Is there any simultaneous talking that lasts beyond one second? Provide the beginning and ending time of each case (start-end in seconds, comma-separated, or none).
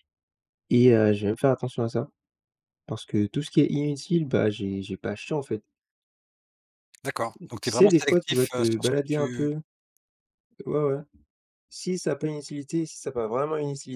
7.4-9.5